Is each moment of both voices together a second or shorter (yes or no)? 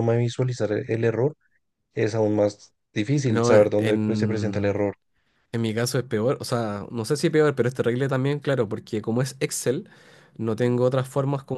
no